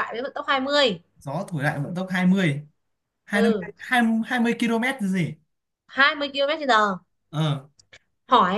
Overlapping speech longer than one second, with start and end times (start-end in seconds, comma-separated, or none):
none